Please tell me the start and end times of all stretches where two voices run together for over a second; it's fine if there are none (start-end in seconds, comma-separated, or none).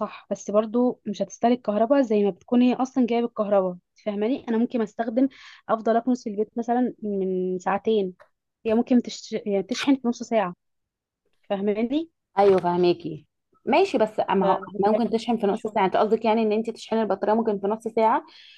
14.4-16.0